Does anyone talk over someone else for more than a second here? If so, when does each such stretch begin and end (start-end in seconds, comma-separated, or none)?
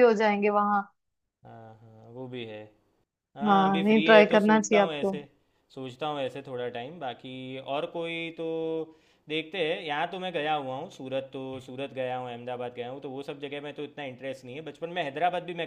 3.5-5.1